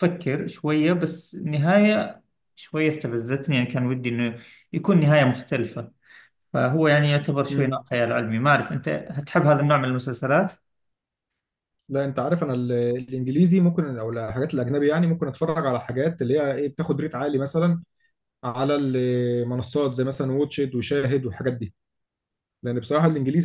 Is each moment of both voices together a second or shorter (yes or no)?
yes